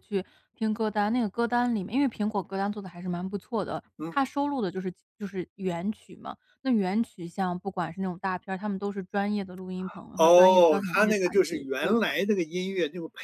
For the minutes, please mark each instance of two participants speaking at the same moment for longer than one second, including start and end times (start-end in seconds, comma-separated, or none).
10.2-12.2